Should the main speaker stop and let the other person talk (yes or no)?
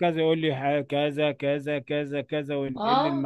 no